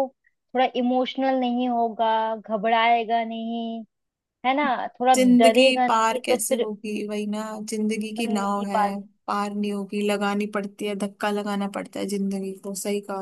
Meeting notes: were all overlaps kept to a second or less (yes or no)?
no